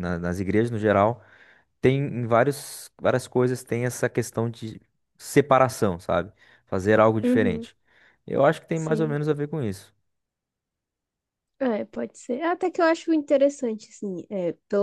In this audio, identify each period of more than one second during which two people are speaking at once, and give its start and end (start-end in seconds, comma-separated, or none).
none